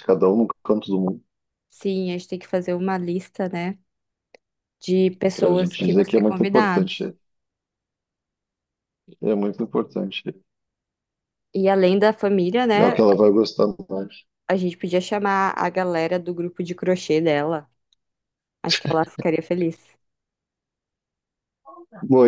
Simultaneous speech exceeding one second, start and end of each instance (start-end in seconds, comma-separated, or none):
5.3-7.1